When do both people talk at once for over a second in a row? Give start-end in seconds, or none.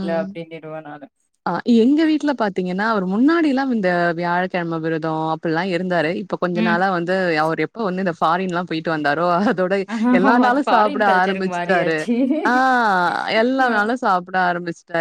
10.5-12.0